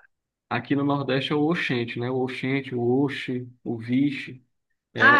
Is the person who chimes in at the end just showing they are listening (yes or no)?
no